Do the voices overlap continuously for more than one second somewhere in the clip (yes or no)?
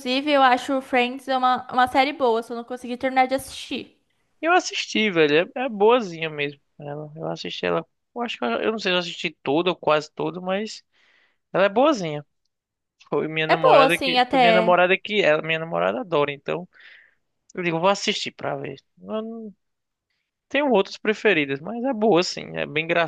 yes